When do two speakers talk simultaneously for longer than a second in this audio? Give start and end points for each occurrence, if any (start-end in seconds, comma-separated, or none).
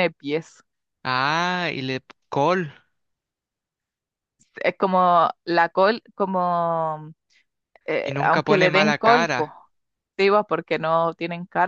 8.0-9.5